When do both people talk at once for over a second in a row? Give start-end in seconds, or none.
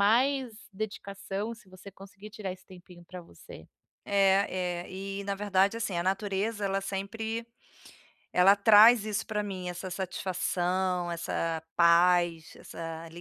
none